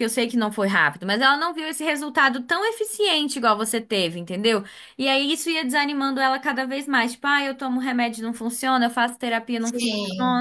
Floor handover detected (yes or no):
no